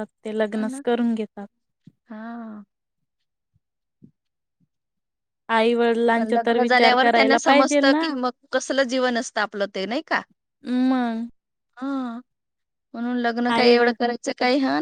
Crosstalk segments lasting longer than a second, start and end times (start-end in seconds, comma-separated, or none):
6.2-8.1